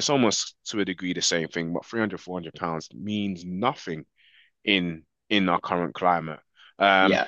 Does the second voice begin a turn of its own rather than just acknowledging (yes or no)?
no